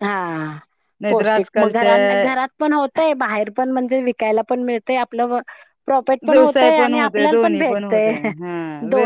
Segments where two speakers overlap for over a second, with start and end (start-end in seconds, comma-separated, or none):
6.3-8.1